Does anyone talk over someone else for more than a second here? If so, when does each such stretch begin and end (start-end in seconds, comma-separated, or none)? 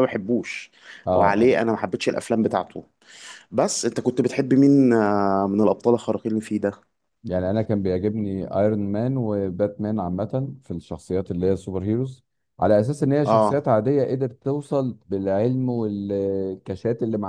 none